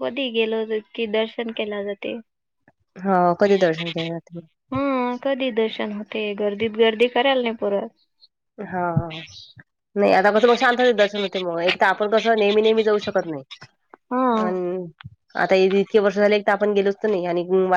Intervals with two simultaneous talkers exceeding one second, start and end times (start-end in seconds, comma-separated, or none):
none